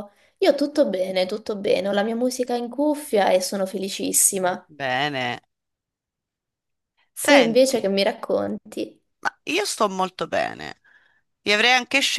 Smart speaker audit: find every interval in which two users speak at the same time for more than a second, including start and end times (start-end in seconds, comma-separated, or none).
none